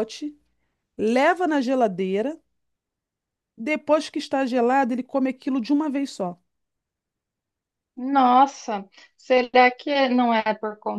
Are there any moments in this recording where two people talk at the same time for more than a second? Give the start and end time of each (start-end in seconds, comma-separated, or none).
none